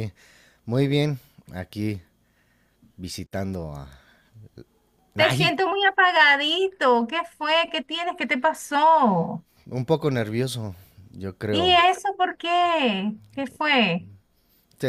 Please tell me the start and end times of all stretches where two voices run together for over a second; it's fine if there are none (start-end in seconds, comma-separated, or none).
none